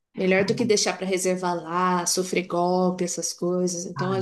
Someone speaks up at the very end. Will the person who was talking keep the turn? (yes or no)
yes